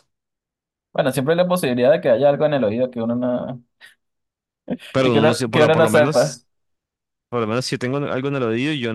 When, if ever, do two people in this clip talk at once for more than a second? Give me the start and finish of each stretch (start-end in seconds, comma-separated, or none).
5.0-6.4